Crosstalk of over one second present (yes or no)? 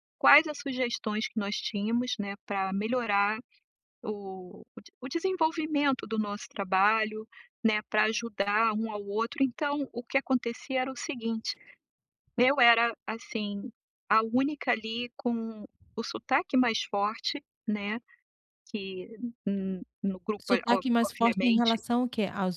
yes